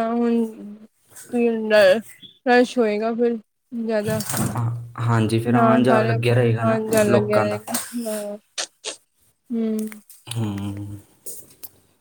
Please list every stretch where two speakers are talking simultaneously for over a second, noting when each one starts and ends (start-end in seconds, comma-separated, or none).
5.5-7.6